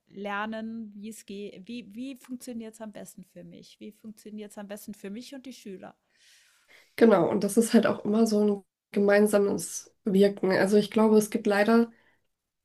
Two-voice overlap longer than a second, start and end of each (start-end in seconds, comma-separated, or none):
none